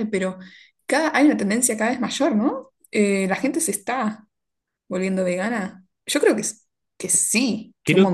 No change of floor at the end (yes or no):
no